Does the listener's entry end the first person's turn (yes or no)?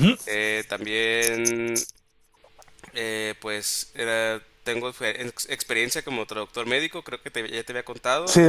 yes